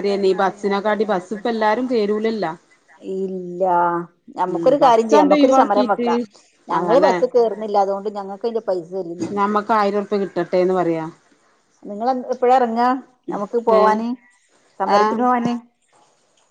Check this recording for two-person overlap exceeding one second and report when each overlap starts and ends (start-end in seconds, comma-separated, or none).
4.5-6.1